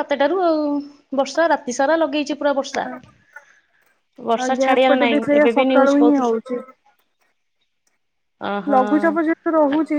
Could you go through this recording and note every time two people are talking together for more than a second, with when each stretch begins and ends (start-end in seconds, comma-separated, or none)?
4.4-6.4